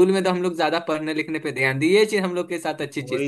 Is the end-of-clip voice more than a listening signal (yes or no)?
yes